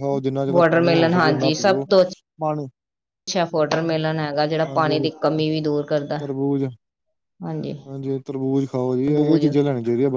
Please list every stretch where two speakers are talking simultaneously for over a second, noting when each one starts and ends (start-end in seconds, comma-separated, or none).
none